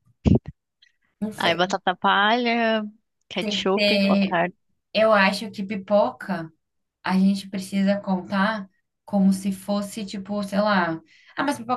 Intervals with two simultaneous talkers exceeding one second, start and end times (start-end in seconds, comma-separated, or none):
none